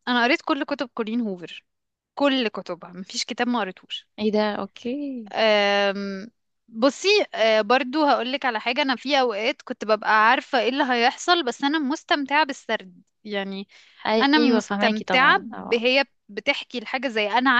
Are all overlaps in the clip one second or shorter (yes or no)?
no